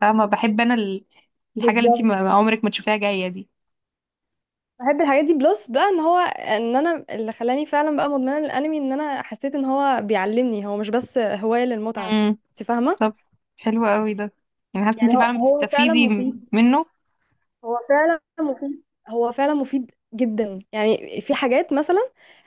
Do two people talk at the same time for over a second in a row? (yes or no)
yes